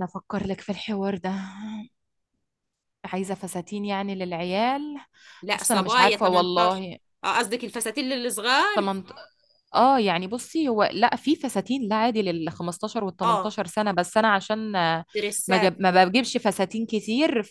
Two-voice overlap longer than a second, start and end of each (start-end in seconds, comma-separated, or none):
5.5-6.8